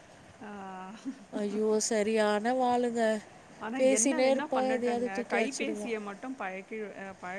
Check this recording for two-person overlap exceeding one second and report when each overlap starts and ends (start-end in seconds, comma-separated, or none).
3.8-5.9